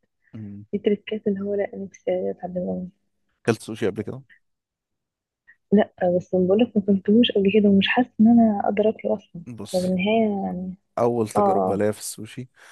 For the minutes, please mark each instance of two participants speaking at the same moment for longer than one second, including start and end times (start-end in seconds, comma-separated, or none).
none